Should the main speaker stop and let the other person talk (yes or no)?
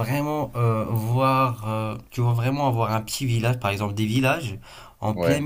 no